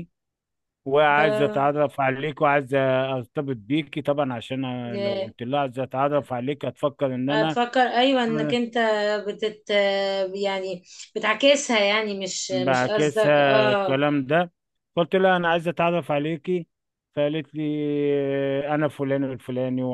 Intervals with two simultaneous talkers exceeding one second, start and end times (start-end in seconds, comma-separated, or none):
12.5-14.0